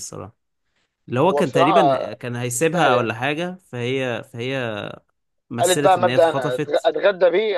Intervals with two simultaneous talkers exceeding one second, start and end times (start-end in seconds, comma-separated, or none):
5.6-6.9